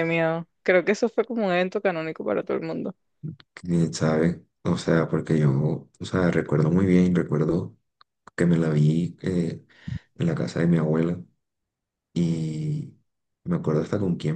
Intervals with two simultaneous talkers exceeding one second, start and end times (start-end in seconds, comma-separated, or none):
none